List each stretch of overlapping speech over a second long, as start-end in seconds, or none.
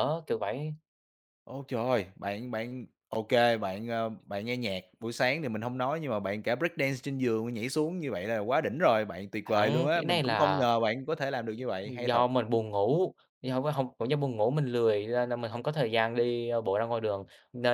9.4-10.7